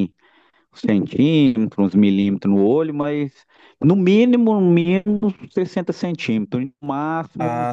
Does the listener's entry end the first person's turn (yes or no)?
yes